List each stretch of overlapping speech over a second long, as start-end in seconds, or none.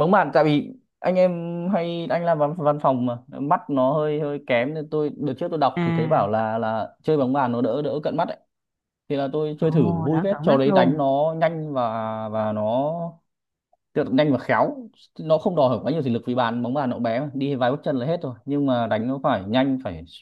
9.6-11.0